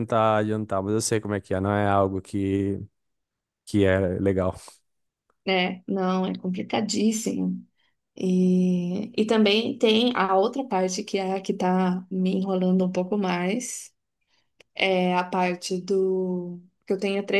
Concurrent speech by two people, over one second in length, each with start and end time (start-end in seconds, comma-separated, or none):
none